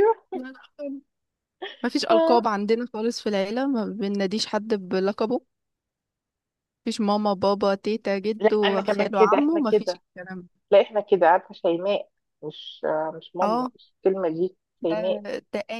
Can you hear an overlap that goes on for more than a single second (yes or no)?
yes